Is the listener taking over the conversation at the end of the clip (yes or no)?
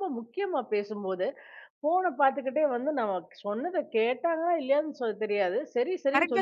yes